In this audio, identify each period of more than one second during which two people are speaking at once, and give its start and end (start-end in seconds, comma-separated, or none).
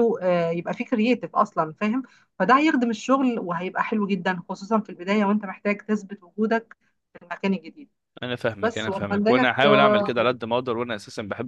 8.6-10.4